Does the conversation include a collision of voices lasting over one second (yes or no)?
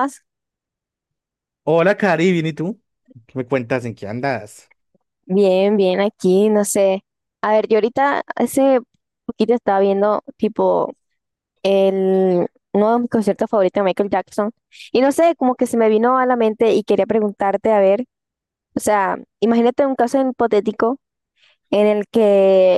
no